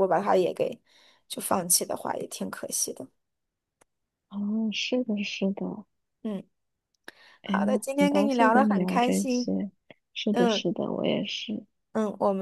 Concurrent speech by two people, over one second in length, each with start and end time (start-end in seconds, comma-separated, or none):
7.4-9.5